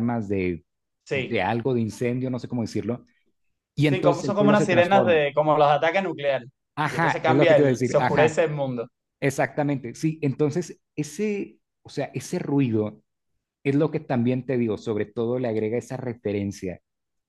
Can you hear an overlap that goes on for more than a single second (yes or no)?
yes